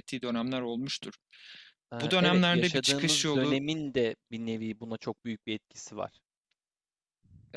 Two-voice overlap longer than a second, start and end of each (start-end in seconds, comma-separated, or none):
2.0-3.6